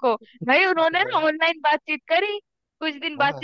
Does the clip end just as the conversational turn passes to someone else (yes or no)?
no